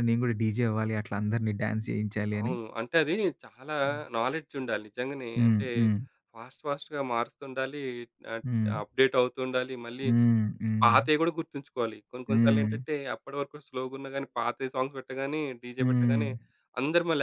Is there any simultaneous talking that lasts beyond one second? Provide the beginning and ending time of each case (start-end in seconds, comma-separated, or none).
none